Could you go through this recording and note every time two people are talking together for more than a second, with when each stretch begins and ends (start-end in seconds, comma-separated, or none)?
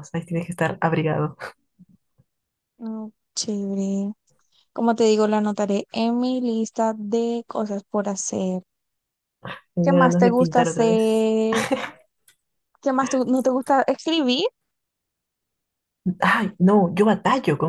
9.8-11.2